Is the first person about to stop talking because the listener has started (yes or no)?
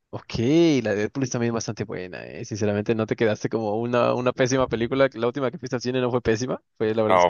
yes